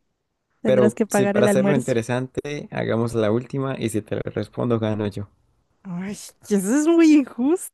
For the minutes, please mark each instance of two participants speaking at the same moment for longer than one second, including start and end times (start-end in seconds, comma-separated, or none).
0.6-2.0